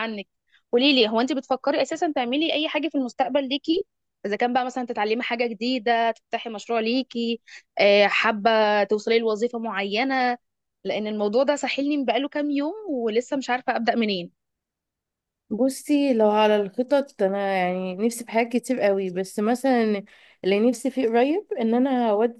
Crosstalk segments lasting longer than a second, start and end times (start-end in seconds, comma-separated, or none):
none